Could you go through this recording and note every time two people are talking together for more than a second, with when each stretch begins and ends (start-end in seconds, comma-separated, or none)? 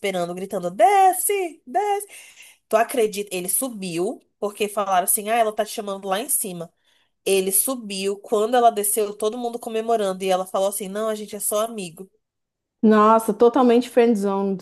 none